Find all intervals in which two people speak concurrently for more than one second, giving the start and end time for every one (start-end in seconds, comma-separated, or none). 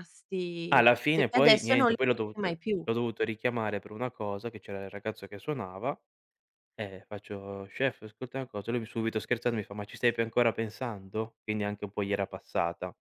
0.7-2.5